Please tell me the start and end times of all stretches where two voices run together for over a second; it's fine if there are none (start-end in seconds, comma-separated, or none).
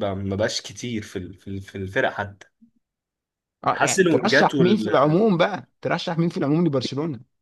3.8-5.2